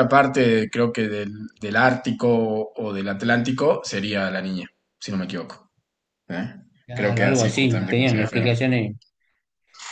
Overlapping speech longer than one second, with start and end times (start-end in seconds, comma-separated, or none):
6.9-8.5